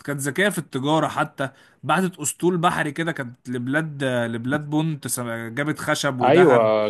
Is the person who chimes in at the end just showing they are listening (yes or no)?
no